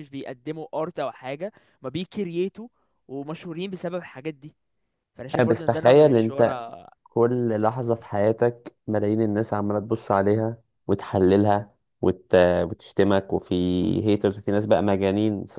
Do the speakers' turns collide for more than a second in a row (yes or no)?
yes